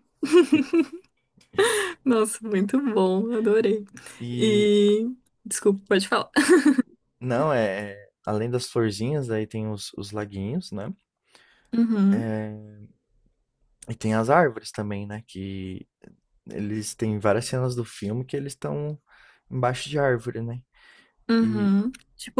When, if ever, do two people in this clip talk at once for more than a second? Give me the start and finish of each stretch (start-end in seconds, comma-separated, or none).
none